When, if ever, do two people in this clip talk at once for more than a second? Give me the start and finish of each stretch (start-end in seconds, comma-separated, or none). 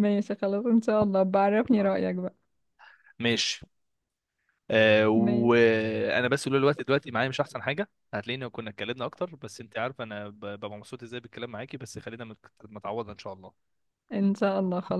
none